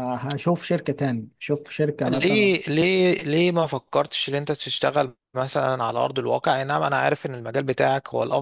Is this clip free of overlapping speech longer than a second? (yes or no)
yes